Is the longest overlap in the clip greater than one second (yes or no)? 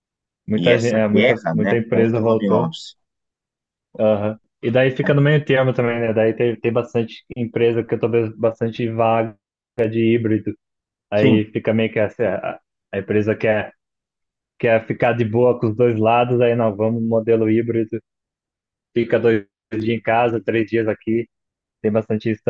yes